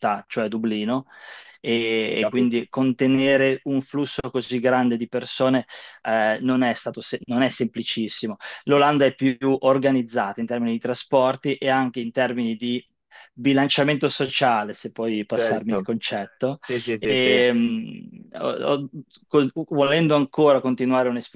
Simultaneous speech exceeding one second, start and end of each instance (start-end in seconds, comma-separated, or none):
none